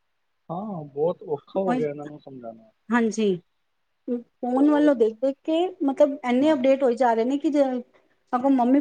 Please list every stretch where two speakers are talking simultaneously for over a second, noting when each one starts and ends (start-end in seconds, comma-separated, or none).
none